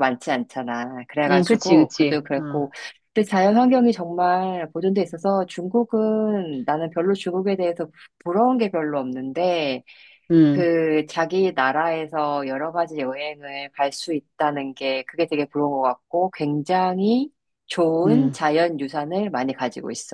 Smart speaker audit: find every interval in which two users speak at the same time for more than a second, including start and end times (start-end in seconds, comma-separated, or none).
1.3-2.7